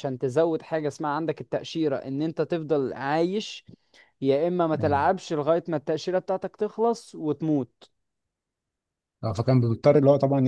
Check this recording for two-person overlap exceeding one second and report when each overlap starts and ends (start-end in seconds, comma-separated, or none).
none